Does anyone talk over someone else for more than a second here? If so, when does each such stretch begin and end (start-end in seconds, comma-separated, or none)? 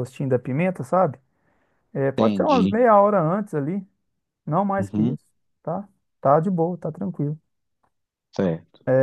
none